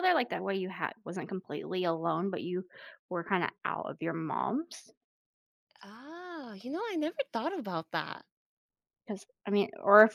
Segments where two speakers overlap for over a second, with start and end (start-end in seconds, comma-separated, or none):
none